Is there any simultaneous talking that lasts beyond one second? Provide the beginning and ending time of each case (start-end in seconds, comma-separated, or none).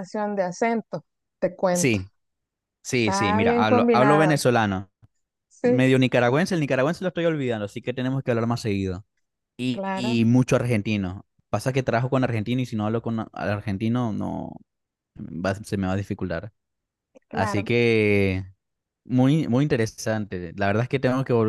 3.0-4.4